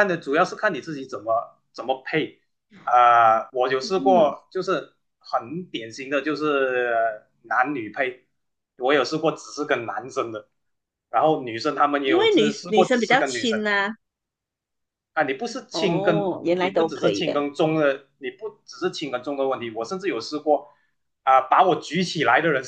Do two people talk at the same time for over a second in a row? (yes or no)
yes